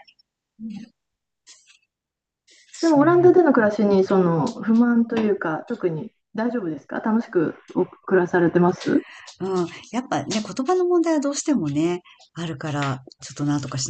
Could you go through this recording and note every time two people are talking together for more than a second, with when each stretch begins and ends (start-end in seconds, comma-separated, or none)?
none